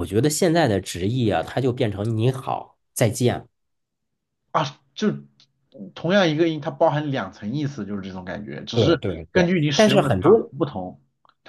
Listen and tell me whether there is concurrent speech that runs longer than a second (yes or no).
yes